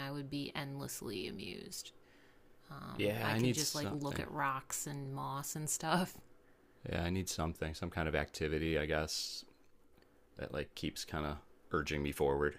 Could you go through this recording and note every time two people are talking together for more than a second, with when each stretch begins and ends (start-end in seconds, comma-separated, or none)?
3.0-4.2